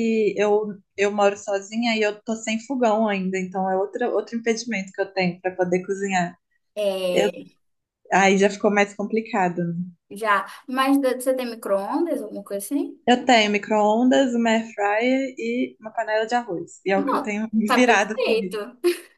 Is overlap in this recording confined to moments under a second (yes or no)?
no